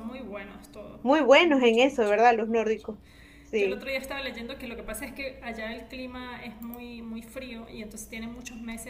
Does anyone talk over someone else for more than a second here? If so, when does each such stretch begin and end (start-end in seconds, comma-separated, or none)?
1.4-2.9